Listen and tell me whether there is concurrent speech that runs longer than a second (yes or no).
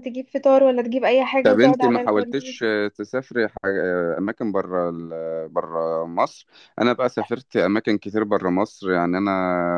yes